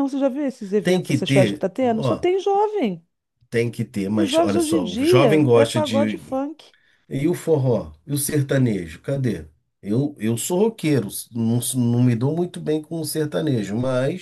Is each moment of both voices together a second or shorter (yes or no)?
no